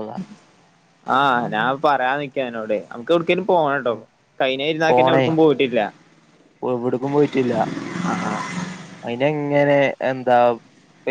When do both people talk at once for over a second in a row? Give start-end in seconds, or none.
none